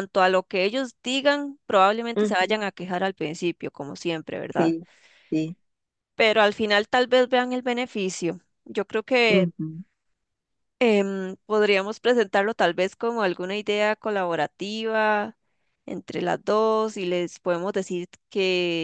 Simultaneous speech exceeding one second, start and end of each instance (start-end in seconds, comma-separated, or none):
none